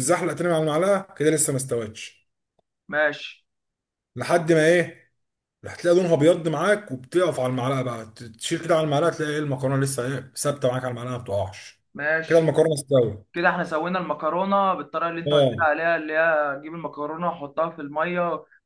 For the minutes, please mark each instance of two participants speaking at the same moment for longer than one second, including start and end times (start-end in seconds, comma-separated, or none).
none